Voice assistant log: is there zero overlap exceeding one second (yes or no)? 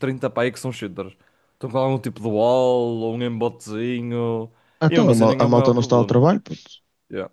no